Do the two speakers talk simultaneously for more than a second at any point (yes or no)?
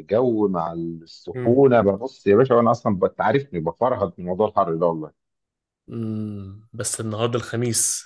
no